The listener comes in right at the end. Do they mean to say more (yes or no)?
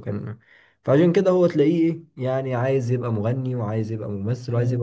yes